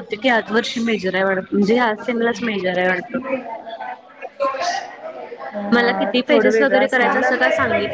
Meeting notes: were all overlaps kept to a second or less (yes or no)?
no